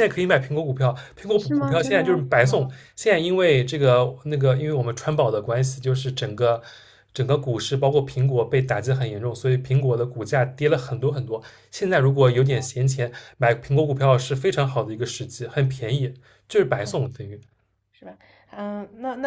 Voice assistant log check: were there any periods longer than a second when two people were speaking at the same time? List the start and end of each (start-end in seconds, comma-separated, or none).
1.4-2.7